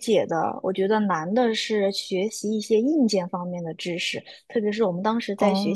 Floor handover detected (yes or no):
no